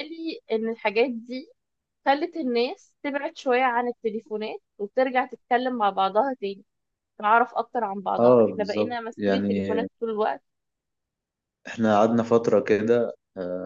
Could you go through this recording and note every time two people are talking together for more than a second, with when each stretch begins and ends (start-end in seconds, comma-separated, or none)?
8.2-9.9